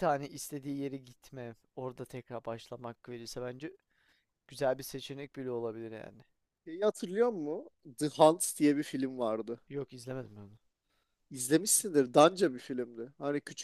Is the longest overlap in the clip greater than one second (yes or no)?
no